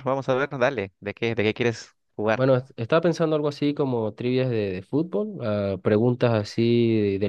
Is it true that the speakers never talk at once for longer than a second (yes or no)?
yes